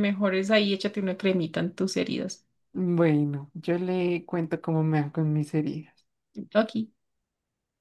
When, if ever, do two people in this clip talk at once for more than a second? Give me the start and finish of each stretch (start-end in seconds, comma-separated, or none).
none